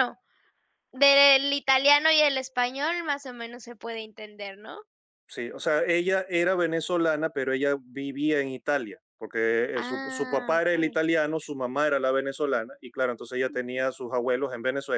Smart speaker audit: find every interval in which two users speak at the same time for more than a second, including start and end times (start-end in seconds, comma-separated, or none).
9.8-11.0